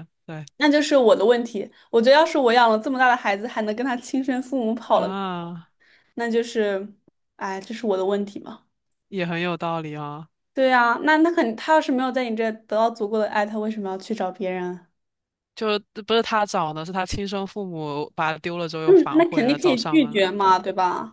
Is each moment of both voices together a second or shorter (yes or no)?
no